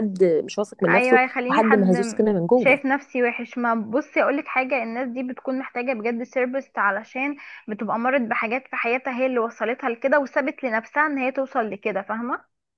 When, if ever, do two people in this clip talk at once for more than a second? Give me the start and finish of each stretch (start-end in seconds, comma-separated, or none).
0.9-2.8